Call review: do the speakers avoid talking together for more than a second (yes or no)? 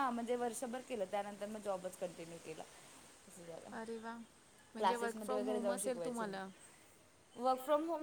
no